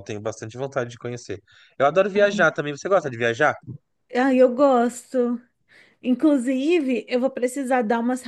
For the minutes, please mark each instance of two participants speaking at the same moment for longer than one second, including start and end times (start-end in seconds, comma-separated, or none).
none